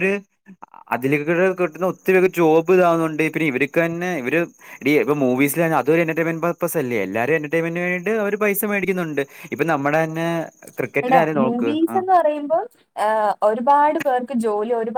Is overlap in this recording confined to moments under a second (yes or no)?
yes